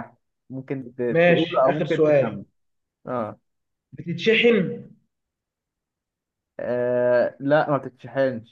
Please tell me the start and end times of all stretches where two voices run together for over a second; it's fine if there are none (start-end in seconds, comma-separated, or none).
1.1-2.4